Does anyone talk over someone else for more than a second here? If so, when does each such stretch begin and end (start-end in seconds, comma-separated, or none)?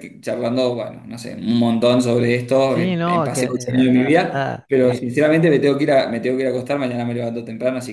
2.7-5.1